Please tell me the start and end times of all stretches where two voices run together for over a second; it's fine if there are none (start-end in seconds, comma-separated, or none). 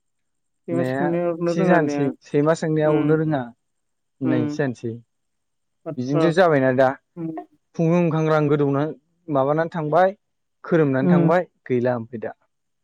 0.7-2.1